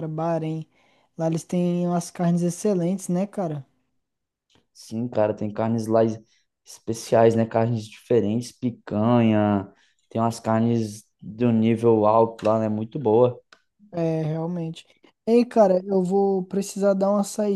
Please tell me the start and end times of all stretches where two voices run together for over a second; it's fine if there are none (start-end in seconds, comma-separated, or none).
none